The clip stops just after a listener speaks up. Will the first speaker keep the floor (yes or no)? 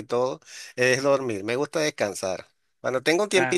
yes